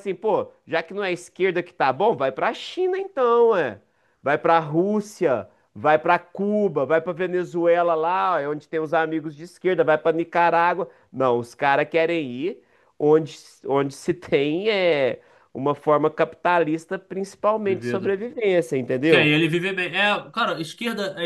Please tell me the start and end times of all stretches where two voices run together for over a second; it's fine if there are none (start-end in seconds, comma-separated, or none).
none